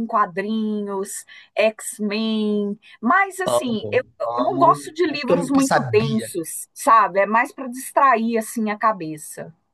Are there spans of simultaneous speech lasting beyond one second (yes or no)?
yes